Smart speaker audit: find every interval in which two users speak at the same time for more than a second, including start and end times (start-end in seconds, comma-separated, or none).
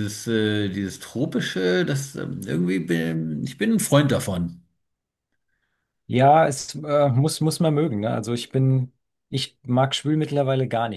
none